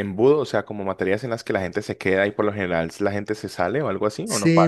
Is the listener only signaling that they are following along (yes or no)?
no